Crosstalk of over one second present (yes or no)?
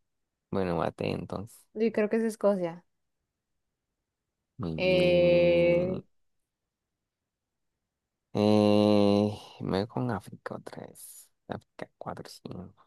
yes